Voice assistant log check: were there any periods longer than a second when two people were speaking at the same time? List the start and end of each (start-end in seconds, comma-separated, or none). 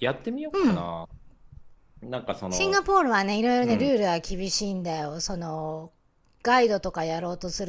none